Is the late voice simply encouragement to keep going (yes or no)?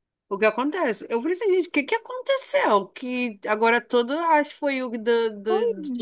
yes